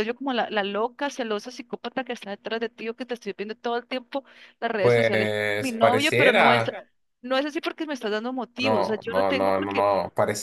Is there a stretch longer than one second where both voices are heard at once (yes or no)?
yes